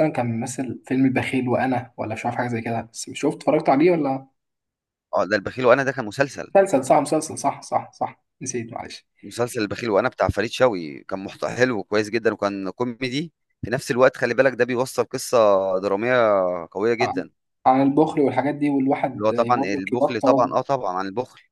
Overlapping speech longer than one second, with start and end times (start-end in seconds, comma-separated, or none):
19.1-20.6